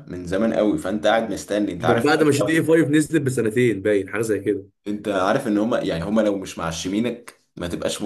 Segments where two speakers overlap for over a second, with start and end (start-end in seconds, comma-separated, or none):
none